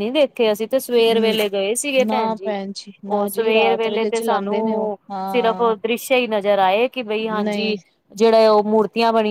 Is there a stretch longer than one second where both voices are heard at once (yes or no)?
yes